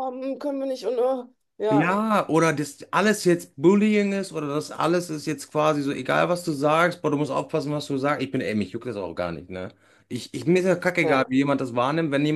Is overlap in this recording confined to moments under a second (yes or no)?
yes